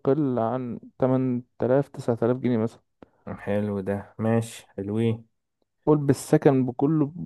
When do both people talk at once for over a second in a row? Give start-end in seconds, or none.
none